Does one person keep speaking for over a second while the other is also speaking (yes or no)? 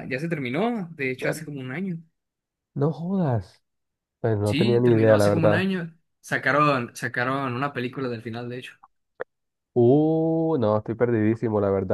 yes